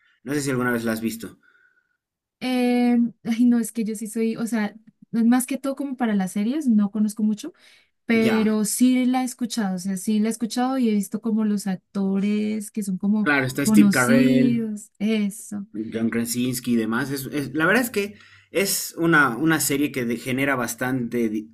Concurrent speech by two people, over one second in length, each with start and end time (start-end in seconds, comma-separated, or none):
13.2-14.7